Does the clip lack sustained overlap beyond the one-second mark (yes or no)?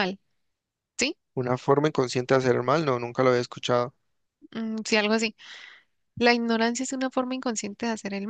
yes